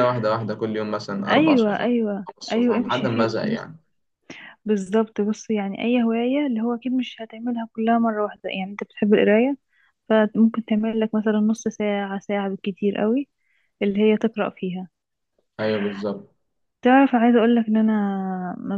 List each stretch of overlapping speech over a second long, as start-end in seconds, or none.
1.3-3.7